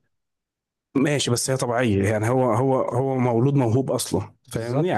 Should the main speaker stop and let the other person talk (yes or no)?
no